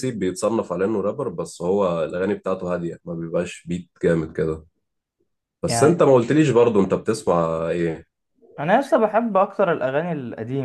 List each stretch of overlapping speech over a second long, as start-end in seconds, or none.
none